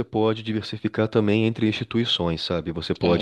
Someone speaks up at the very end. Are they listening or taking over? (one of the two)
listening